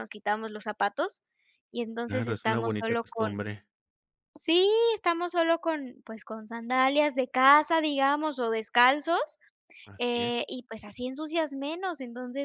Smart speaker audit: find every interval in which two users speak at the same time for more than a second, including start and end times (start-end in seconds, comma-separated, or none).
2.1-3.4